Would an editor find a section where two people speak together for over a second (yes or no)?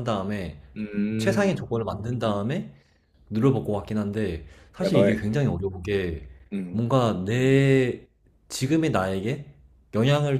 no